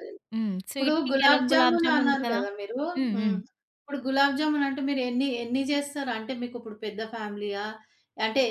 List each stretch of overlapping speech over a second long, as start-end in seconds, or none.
0.7-2.4